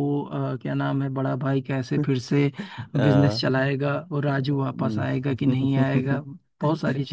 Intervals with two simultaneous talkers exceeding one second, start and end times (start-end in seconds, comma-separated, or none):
4.8-6.2